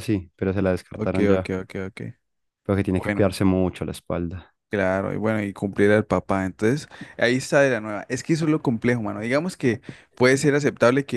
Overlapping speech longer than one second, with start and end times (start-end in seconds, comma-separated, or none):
none